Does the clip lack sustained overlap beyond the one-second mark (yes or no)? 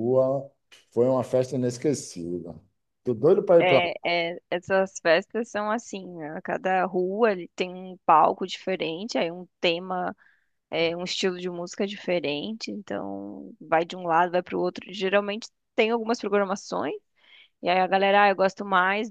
yes